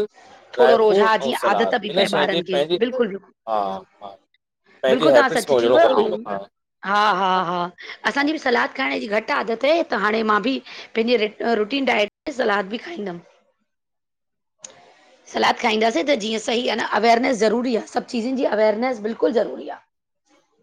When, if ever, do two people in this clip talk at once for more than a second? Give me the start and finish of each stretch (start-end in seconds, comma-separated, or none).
0.6-3.3